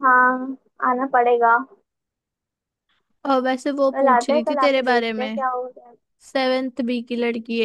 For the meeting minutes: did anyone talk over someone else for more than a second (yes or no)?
yes